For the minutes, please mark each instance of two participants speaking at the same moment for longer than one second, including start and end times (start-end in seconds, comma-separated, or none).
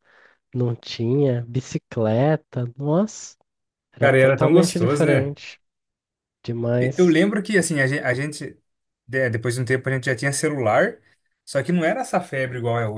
4.0-5.3